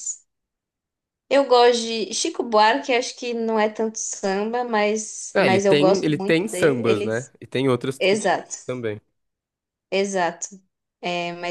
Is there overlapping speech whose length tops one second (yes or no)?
yes